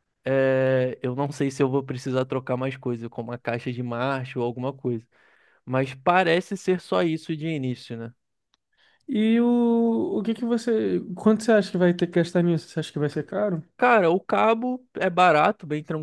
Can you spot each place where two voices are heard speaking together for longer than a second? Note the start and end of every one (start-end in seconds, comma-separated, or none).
none